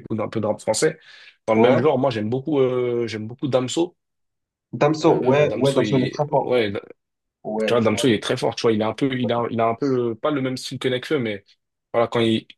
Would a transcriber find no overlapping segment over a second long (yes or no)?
no